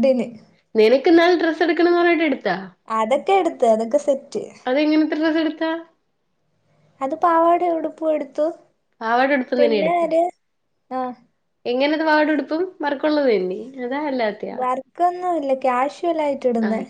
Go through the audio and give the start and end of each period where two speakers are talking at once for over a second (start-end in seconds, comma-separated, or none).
none